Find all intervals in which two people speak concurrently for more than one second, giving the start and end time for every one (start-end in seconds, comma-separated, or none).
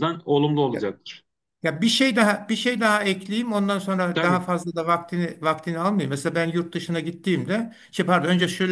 none